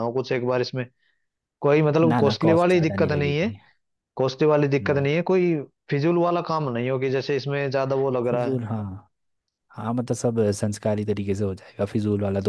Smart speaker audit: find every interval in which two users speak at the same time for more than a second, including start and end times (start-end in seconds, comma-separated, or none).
2.1-3.5